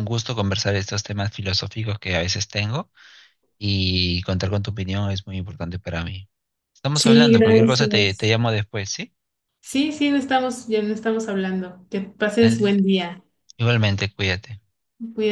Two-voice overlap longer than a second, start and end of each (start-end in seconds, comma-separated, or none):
6.9-8.3